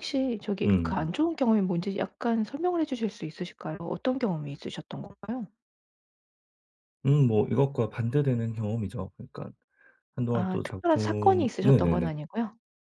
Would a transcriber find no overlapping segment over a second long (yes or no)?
no